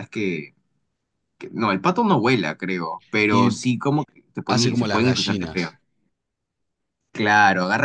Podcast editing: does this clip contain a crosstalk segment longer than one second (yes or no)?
yes